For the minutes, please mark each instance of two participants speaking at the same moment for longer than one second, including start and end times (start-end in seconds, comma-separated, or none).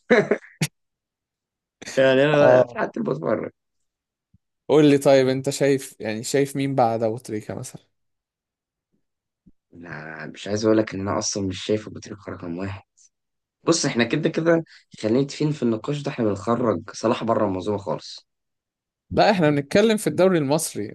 none